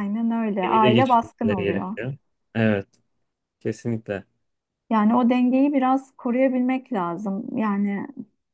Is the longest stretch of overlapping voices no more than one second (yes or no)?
no